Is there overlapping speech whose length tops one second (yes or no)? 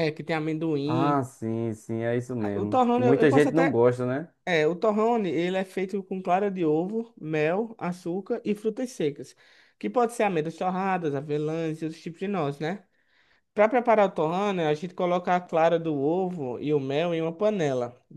yes